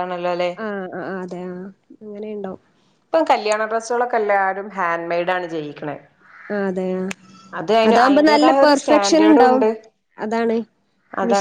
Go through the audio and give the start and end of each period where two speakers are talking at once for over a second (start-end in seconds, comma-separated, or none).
7.9-9.6